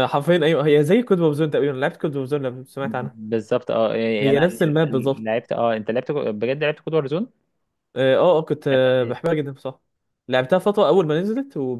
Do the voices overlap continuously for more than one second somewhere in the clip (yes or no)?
no